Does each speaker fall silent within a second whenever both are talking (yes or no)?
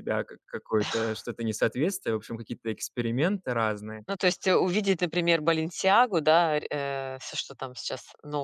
yes